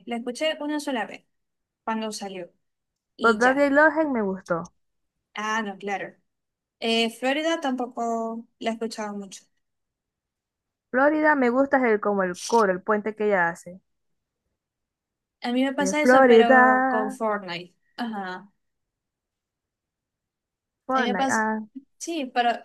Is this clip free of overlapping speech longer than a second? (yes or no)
no